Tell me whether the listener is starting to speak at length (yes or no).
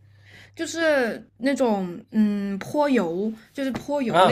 yes